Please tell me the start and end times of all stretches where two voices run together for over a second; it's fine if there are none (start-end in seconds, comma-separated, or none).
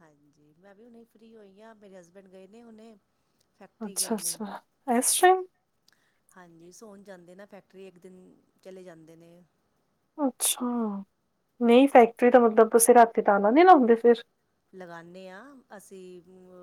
none